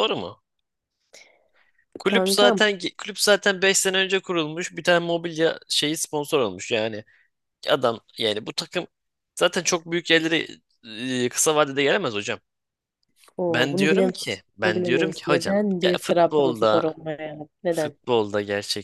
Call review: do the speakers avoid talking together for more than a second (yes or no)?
no